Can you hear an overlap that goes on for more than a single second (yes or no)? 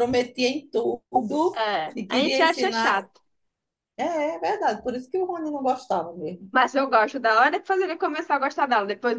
yes